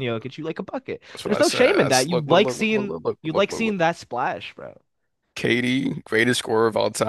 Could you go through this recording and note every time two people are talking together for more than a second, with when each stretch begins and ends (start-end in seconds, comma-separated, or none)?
1.1-3.8